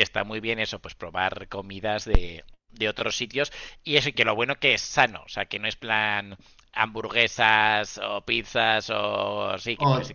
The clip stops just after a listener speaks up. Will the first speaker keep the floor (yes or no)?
no